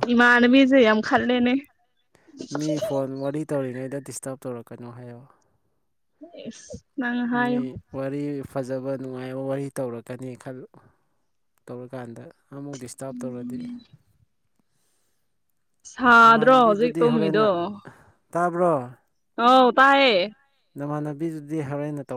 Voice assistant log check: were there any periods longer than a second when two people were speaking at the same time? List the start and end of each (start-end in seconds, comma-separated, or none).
16.2-17.5